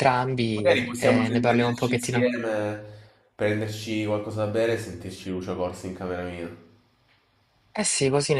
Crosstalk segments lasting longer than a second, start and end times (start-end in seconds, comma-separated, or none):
0.5-2.3